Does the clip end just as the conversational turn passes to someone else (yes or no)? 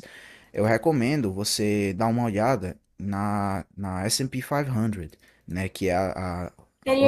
no